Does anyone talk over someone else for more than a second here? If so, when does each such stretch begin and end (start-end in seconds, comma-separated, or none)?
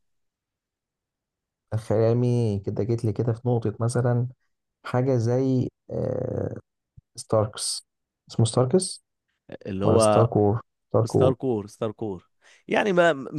none